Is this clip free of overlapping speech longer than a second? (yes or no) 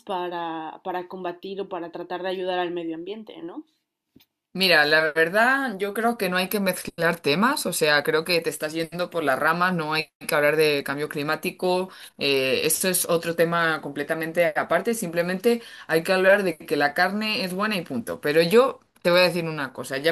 yes